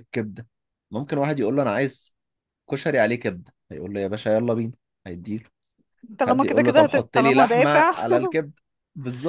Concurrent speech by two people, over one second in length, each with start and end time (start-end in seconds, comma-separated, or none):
6.3-7.9